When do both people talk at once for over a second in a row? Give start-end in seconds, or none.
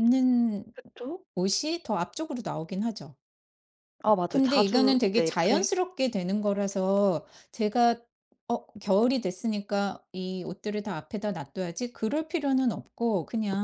4.3-5.7